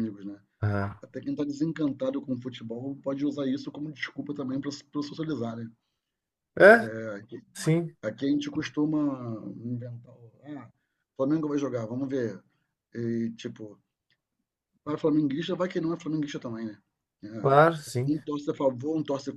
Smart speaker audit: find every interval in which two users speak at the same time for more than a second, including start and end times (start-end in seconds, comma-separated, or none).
none